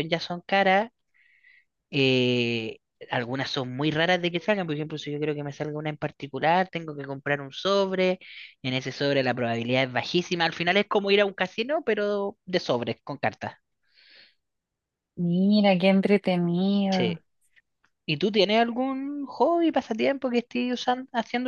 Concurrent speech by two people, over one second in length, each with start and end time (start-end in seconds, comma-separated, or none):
none